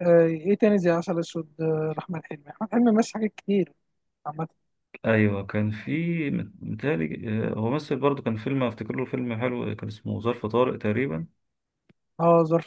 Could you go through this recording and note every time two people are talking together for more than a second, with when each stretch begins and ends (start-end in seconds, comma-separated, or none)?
none